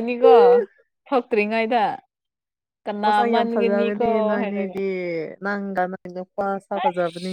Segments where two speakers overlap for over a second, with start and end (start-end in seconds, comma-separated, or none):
3.0-4.8